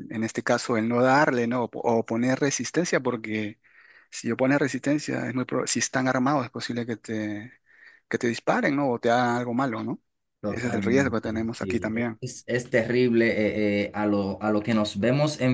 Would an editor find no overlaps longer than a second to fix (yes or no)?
no